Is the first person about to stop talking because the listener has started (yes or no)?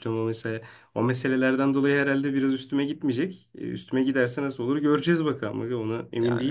yes